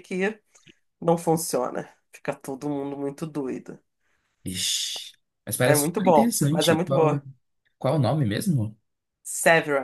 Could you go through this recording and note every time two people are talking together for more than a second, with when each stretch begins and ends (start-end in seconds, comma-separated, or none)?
5.6-7.2